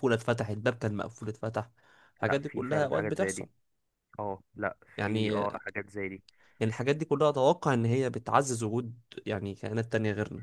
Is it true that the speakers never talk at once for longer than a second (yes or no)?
no